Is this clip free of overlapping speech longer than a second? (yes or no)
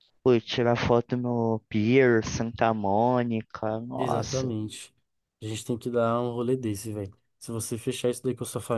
yes